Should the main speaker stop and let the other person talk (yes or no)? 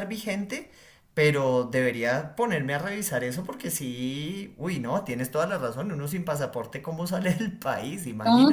yes